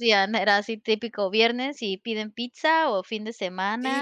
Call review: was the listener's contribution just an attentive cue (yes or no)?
no